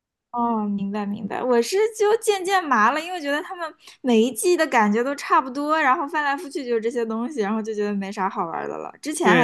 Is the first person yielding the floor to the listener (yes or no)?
yes